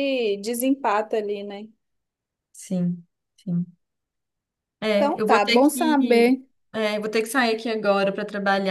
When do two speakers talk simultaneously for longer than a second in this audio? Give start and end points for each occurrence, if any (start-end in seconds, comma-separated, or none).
5.0-6.4